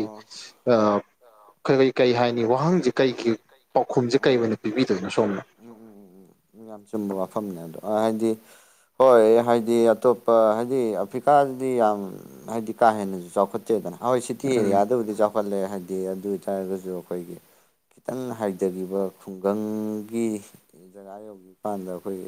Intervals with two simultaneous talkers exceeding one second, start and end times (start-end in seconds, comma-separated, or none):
none